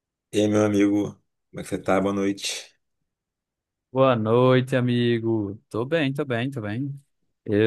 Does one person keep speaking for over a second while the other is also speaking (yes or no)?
no